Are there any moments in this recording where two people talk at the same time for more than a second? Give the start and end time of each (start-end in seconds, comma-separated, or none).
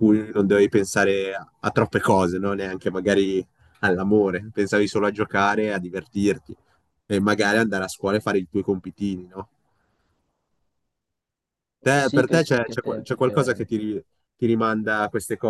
11.8-13.7